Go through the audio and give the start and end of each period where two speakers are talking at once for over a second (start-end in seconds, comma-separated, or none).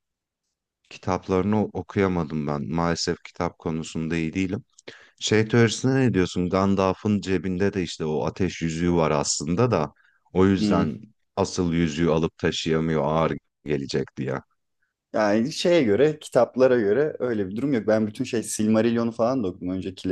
none